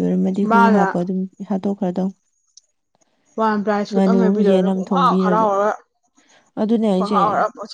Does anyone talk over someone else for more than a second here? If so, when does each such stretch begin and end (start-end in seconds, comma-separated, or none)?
3.9-5.5